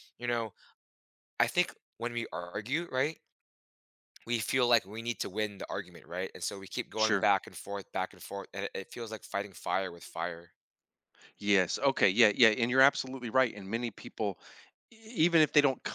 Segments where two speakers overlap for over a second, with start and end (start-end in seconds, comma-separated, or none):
none